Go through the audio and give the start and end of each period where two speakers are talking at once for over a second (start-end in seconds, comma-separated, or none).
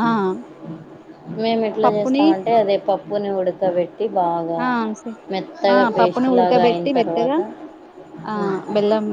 5.7-7.4